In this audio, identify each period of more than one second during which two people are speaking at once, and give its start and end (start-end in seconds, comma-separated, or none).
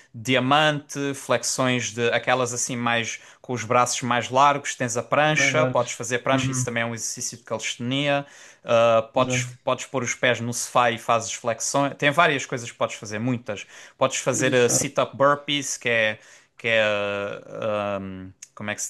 5.3-6.8